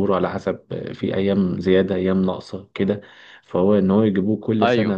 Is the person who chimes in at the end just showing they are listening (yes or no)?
yes